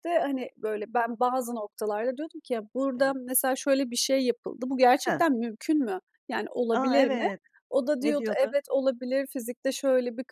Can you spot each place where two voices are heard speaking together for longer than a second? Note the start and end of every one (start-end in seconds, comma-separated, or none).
none